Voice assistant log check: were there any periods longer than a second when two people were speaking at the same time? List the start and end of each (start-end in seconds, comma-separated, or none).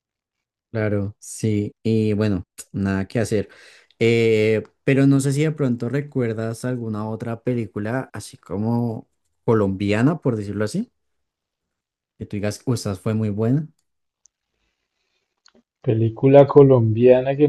none